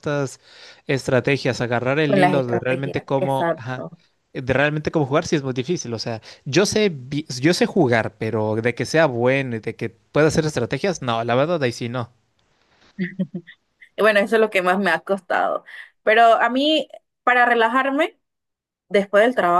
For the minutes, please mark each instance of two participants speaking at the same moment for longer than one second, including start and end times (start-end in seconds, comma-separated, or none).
2.1-3.9